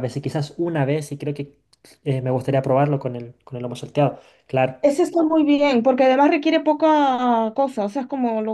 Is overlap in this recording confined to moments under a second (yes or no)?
yes